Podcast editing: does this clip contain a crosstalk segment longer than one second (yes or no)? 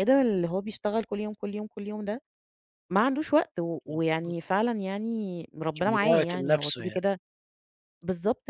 yes